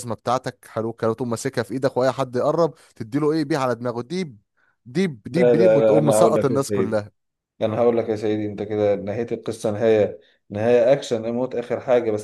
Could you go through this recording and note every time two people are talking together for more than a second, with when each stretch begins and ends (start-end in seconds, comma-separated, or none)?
5.3-7.0